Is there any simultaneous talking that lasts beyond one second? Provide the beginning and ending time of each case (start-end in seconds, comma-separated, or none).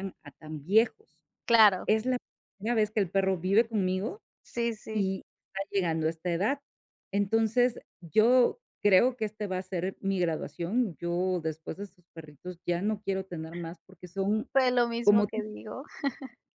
none